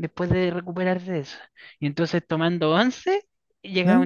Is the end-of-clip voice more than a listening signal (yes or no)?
no